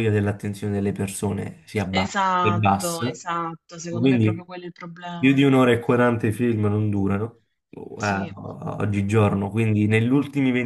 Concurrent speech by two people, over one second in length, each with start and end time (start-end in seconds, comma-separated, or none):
1.9-3.1